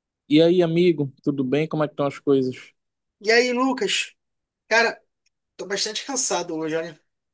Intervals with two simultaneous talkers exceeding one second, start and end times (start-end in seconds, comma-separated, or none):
none